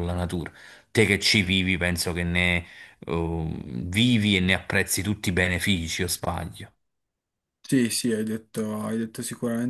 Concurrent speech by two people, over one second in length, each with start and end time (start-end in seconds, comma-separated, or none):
none